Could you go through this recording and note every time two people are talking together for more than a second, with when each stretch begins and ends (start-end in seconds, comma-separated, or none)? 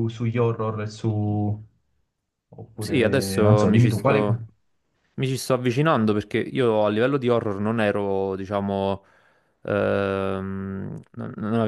2.8-4.2